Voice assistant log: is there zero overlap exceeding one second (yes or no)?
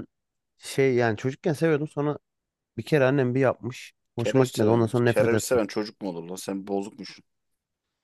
no